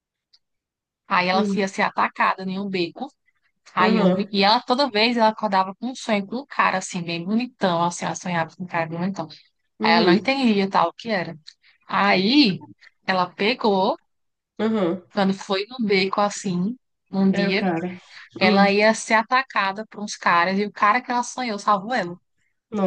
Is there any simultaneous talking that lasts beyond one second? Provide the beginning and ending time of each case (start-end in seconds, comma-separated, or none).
none